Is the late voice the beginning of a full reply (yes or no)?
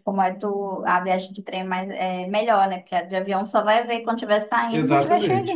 yes